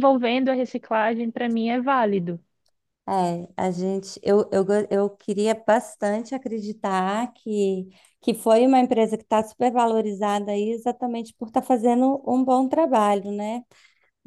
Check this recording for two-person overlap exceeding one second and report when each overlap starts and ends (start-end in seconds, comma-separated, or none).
none